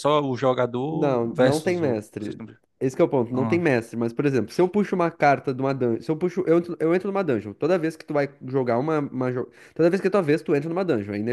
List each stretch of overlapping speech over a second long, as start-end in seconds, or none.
0.9-2.4